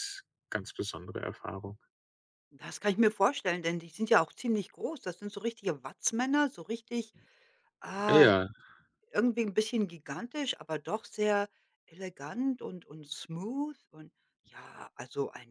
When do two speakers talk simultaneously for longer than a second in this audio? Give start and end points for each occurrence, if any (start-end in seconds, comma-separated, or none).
none